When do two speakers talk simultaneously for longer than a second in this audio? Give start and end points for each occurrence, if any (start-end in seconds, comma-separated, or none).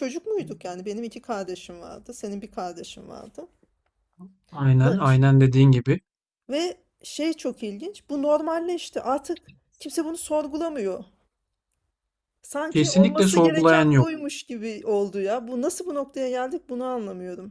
12.7-14.1